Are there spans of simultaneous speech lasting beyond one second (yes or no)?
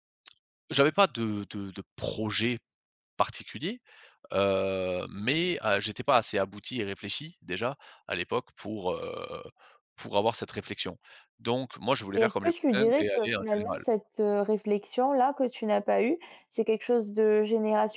yes